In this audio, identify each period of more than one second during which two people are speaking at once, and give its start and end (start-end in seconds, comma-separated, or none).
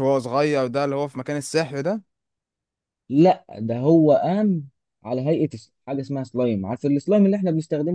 none